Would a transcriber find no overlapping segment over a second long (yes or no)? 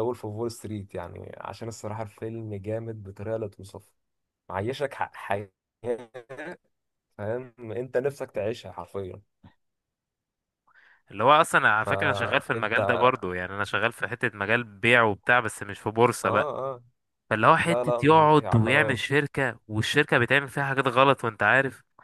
no